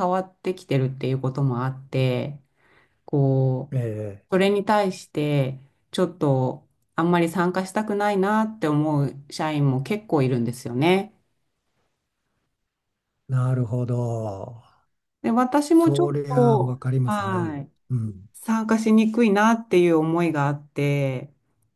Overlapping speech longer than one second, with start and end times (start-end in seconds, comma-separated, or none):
15.7-17.7